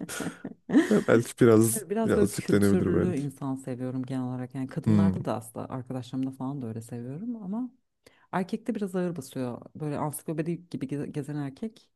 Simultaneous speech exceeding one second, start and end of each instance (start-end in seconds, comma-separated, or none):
1.7-3.2